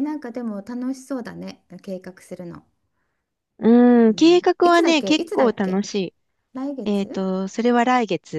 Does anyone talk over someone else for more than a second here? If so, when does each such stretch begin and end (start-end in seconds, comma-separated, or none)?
4.1-5.8